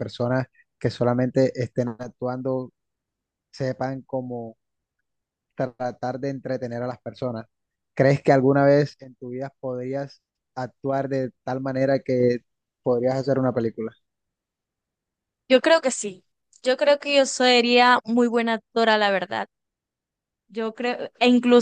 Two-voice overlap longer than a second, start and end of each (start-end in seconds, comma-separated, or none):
none